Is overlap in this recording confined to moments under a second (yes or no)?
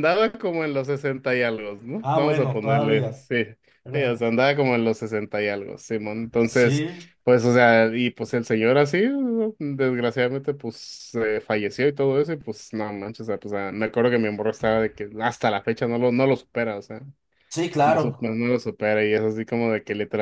no